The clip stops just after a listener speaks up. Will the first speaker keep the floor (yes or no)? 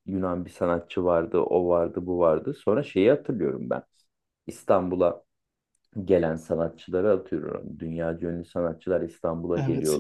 yes